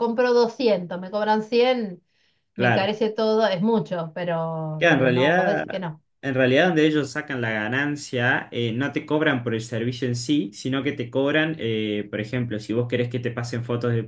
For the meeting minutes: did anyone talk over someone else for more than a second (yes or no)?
yes